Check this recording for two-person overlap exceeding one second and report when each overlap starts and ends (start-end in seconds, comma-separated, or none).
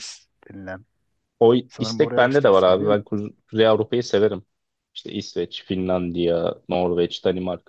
1.7-3.0